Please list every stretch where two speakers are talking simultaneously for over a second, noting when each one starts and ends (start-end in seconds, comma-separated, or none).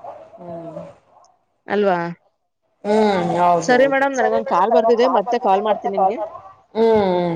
3.7-6.1